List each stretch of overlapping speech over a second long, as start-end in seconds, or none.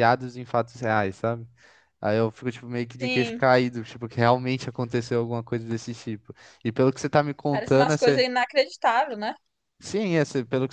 none